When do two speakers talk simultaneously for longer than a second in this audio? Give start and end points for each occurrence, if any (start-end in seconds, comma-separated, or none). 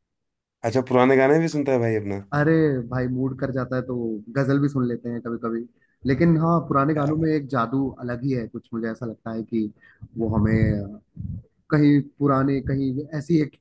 none